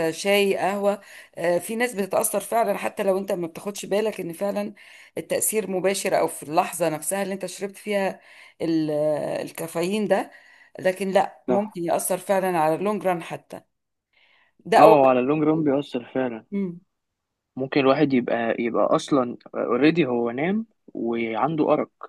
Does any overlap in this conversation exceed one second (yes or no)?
no